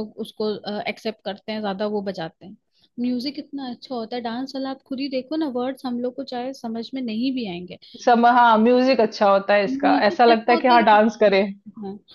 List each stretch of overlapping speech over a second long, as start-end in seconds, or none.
9.7-11.4